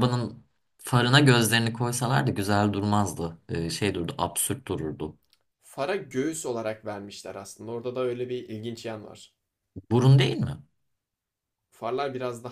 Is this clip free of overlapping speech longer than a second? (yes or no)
yes